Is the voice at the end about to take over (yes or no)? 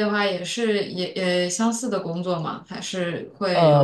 yes